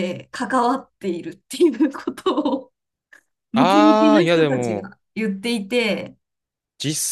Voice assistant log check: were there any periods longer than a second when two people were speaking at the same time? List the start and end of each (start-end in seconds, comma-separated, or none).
3.5-4.9